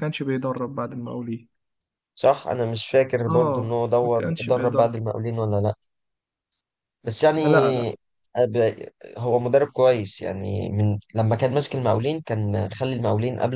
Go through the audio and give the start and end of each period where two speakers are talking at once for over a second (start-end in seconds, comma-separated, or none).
3.3-5.0